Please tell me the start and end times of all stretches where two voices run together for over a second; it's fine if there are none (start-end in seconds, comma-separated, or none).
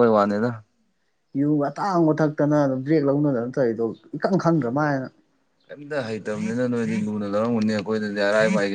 none